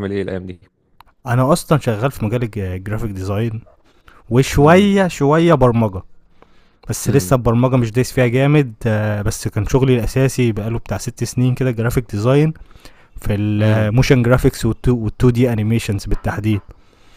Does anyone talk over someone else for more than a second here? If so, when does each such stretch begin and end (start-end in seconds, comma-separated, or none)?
none